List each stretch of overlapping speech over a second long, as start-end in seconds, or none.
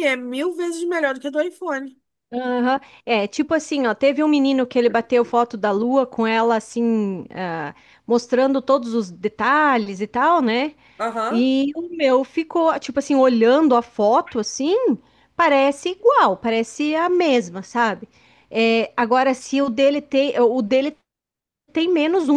none